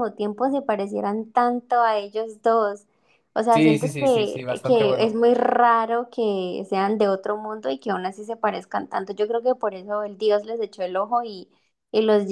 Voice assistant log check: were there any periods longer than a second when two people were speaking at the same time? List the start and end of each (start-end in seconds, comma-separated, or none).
3.5-5.2